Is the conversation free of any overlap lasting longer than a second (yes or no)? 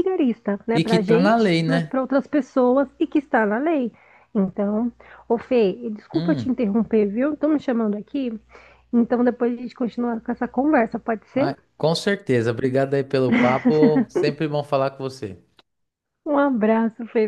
no